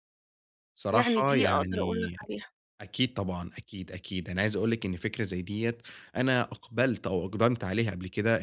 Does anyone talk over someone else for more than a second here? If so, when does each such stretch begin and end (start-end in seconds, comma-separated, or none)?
0.9-2.2